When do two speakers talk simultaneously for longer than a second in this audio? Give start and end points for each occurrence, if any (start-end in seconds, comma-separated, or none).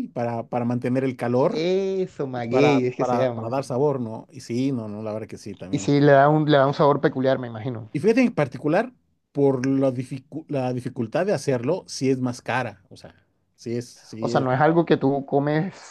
2.4-3.6